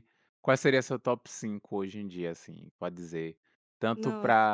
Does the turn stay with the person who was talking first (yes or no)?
yes